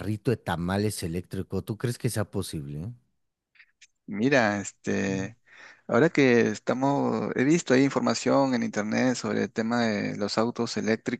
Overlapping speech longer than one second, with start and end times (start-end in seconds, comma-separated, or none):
none